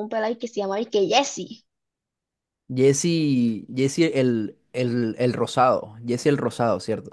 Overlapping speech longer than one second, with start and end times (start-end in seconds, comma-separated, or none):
none